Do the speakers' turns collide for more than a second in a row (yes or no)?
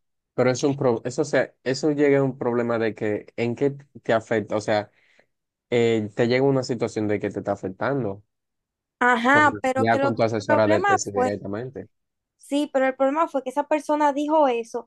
yes